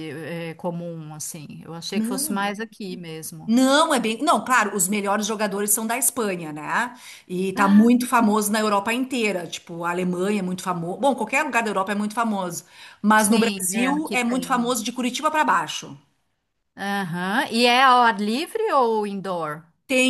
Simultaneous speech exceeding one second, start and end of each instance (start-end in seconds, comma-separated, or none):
13.2-14.8